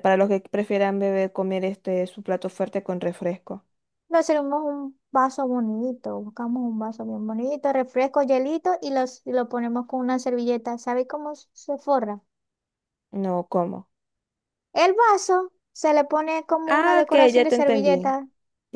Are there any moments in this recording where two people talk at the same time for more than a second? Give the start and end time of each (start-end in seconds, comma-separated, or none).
16.7-18.1